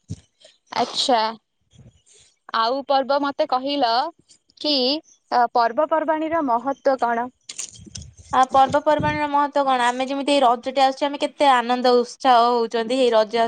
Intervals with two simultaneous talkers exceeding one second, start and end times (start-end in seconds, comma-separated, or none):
none